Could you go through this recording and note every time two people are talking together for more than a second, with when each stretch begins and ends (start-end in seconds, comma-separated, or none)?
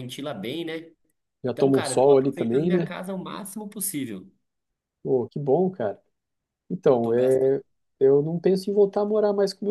1.4-2.9